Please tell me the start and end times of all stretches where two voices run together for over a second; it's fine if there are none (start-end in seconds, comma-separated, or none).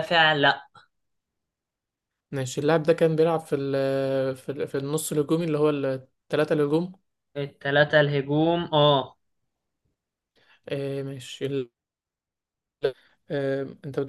none